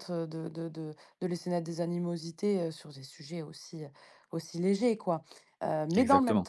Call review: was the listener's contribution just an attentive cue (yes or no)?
yes